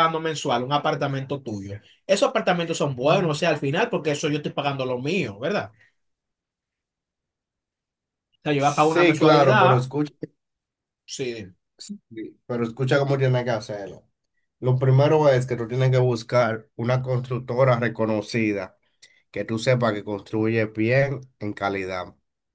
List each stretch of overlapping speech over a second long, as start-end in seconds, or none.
8.6-9.9